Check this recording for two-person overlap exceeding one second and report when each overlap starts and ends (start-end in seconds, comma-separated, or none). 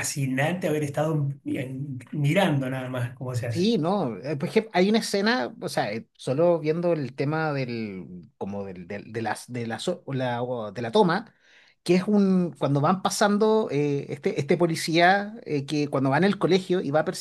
none